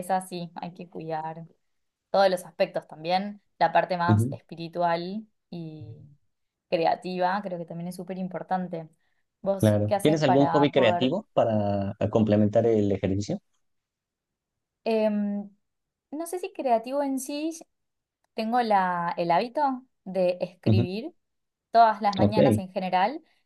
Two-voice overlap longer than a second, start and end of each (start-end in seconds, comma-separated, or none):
9.6-11.2